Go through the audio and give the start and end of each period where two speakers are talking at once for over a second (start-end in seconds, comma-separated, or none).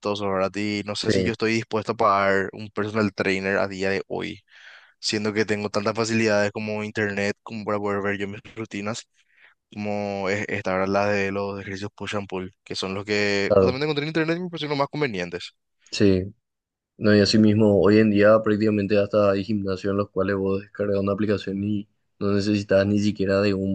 none